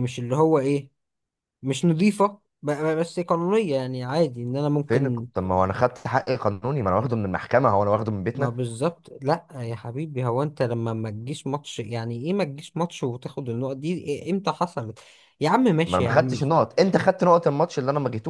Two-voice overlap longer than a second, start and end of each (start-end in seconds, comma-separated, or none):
none